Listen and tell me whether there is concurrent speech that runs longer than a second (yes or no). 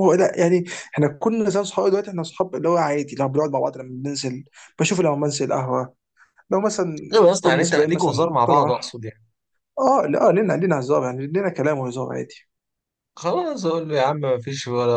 yes